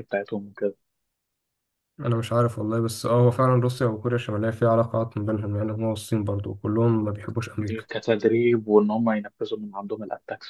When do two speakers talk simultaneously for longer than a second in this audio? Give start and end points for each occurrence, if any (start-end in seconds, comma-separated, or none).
none